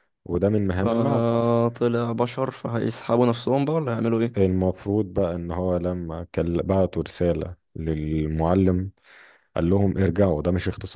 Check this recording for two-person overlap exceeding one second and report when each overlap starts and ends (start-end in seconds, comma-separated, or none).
none